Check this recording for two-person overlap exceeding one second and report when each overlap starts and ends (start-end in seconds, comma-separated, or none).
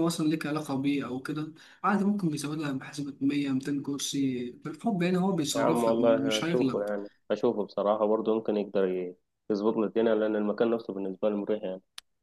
5.5-6.8